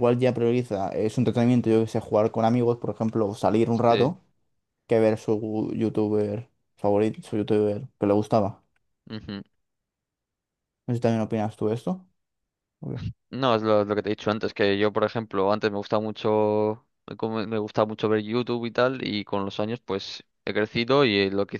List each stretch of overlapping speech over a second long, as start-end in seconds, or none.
none